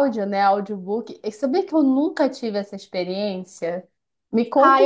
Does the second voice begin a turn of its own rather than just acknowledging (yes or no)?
yes